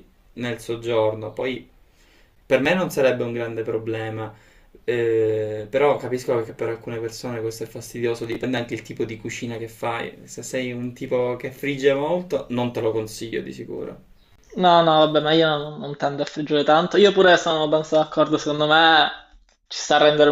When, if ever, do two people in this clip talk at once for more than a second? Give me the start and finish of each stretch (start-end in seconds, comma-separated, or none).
none